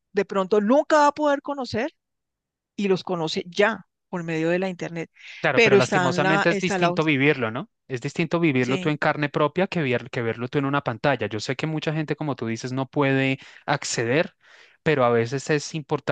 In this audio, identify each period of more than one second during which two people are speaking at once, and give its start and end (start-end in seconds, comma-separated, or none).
5.5-6.9